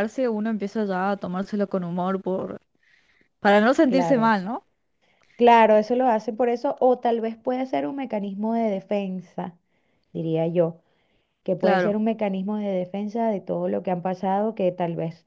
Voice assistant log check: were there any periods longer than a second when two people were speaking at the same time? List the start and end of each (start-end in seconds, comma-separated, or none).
none